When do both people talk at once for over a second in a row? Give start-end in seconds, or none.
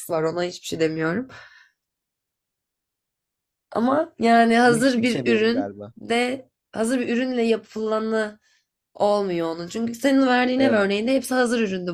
4.6-5.9